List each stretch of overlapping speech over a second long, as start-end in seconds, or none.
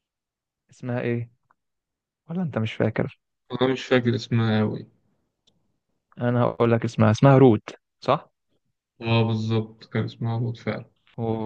none